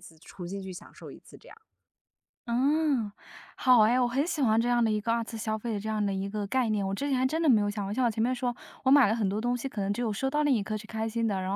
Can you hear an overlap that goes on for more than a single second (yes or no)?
no